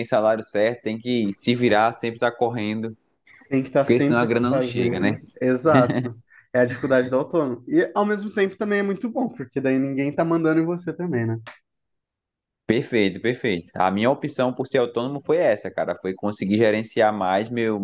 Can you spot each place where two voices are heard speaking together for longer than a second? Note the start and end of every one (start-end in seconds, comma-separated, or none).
3.8-5.2